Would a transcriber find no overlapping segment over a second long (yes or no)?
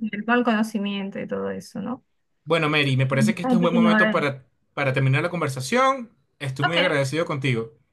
no